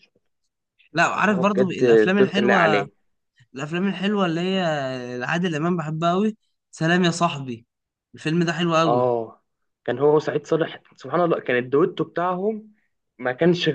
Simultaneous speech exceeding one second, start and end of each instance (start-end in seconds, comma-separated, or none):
1.1-2.9